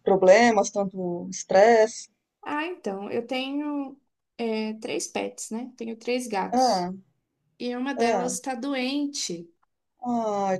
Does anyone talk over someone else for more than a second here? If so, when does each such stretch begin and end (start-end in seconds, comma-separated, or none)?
none